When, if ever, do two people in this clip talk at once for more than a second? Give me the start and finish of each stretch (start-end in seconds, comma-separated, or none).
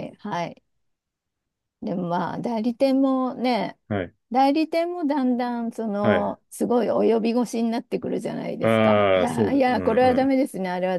8.6-10.3